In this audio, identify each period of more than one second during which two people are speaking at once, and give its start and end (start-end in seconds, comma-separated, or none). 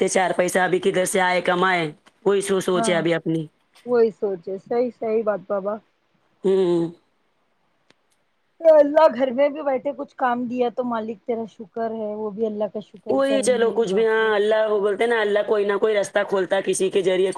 13.1-15.3